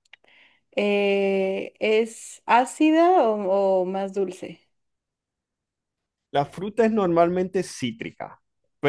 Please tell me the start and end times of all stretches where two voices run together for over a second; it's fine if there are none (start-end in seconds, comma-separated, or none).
none